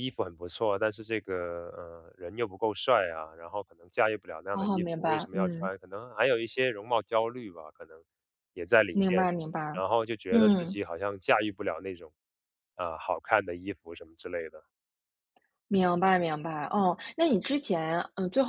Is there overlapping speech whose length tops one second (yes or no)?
yes